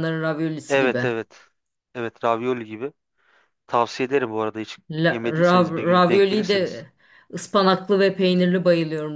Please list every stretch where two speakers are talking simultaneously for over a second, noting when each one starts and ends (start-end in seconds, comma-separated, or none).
5.1-6.8